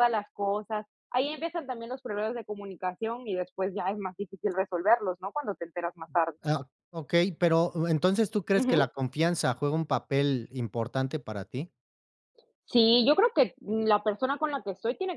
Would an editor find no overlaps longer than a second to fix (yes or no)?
yes